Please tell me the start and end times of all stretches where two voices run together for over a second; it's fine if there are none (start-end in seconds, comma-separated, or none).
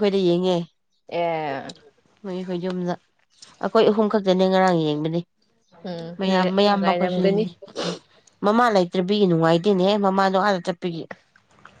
6.2-7.4